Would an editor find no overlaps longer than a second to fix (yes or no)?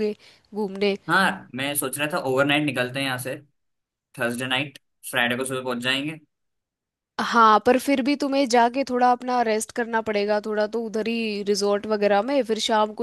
yes